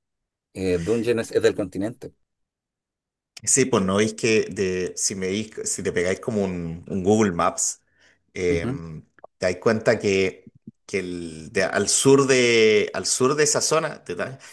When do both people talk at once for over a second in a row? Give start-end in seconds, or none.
none